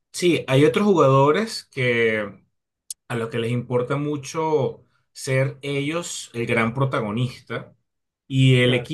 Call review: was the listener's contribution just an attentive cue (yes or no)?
yes